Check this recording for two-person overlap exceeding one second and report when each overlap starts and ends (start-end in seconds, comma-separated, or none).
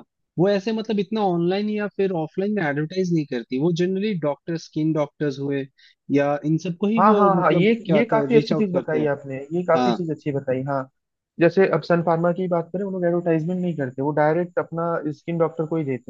7.0-9.1